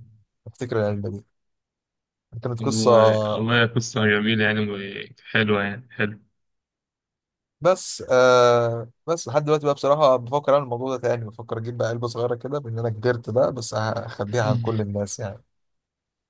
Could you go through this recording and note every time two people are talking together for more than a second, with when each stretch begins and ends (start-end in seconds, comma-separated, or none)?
none